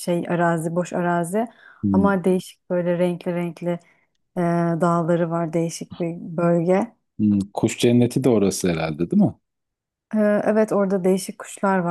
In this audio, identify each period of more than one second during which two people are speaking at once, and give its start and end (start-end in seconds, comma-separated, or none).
none